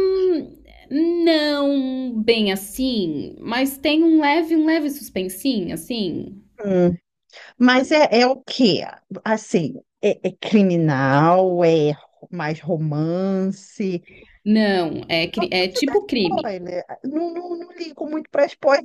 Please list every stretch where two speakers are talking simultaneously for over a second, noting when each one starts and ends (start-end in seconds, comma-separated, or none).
15.3-16.6